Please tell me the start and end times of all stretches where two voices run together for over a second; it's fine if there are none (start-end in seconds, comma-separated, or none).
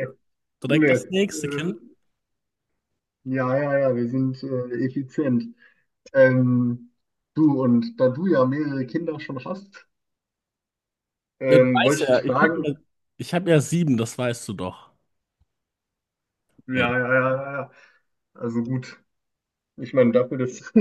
11.5-12.7